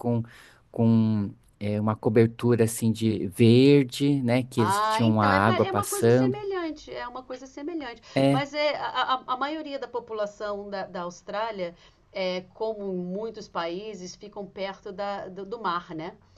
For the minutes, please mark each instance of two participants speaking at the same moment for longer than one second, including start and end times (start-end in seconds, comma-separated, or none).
4.6-6.4